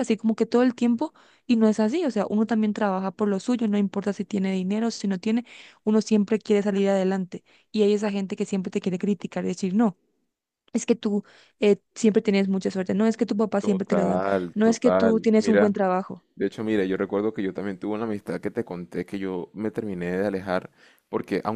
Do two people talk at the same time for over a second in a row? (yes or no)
yes